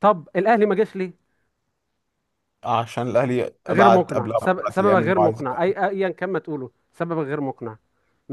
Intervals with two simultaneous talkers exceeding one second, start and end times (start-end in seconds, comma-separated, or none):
3.7-5.4